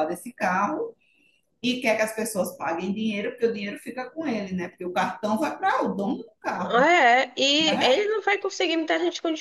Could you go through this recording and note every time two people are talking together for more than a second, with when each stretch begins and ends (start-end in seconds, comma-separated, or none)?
none